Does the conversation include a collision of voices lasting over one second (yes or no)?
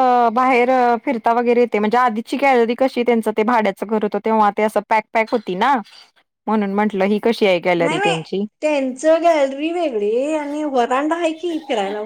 no